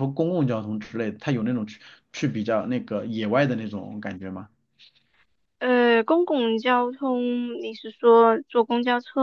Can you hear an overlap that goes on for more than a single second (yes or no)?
no